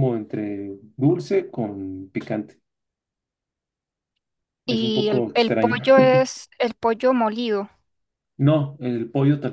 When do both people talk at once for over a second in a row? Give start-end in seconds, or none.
4.7-5.9